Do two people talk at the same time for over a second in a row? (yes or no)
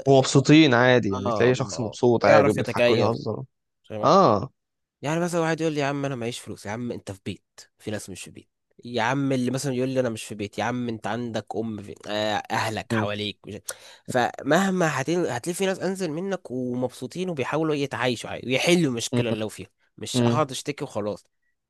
yes